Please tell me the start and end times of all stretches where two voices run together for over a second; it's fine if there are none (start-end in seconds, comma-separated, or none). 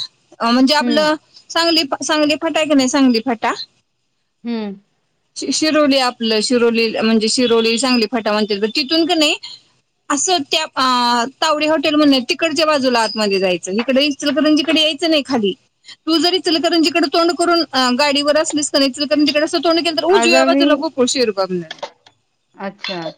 none